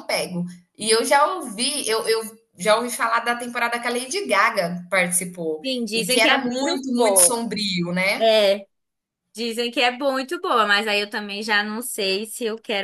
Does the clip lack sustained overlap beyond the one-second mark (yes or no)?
no